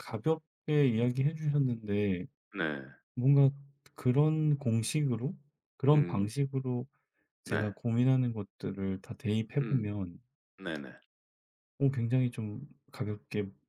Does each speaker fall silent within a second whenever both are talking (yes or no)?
yes